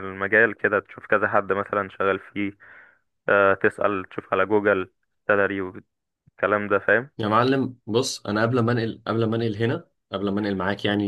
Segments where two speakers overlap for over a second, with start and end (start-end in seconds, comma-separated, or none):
none